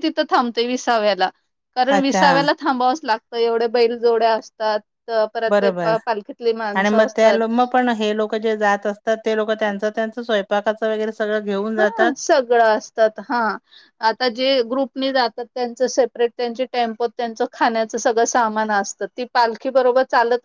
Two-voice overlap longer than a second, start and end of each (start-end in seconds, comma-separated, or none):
none